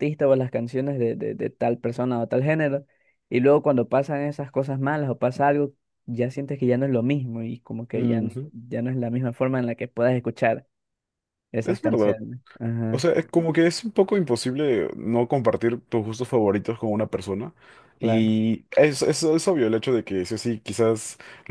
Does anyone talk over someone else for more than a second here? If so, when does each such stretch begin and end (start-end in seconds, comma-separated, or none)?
none